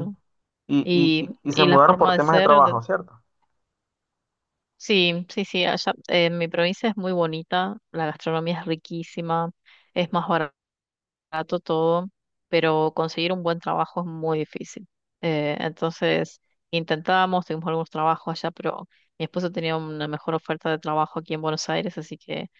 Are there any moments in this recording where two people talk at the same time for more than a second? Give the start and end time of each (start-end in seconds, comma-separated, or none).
0.8-2.8